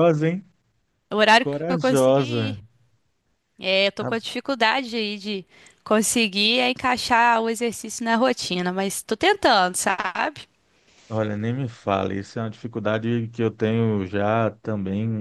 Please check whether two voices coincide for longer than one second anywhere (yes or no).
yes